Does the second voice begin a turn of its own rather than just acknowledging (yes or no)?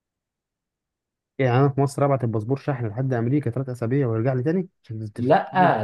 yes